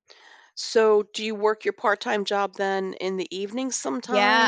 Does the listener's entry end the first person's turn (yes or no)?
yes